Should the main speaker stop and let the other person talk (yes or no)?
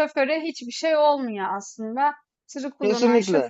no